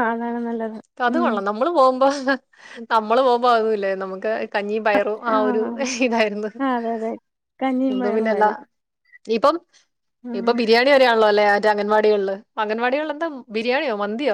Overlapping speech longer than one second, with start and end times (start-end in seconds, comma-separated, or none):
none